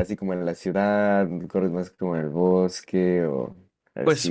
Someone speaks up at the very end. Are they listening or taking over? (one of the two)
taking over